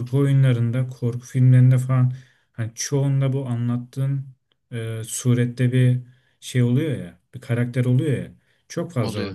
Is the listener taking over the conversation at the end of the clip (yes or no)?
no